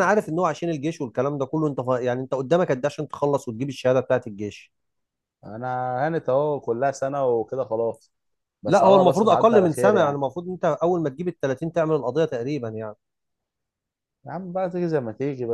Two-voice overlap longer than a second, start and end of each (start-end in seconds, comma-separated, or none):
8.7-10.2